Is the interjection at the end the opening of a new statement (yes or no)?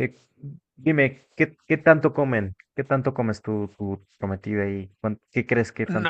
yes